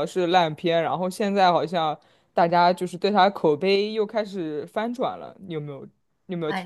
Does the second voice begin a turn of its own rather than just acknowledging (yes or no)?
yes